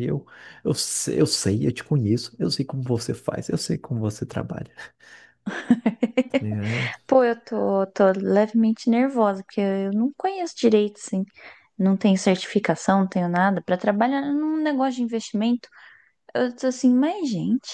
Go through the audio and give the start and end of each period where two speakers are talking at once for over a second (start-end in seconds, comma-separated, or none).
none